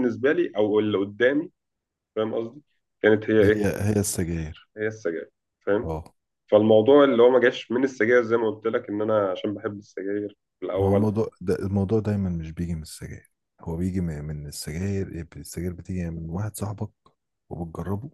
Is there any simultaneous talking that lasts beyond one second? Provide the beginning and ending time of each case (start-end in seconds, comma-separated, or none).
none